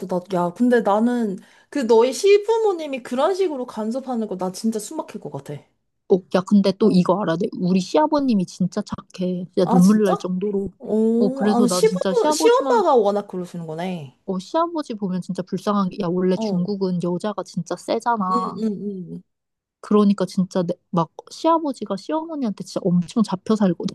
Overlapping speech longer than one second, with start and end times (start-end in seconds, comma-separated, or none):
11.2-12.8